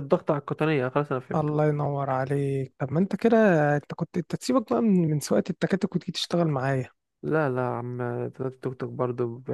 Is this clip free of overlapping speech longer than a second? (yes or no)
yes